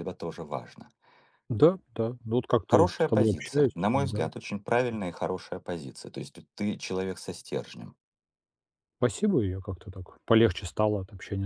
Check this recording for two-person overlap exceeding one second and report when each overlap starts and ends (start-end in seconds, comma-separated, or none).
2.7-4.3